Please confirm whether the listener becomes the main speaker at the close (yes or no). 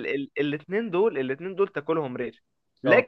no